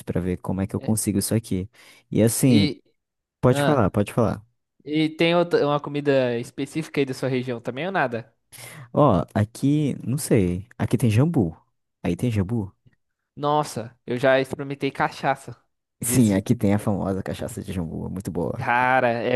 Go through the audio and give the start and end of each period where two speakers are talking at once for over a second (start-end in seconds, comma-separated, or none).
none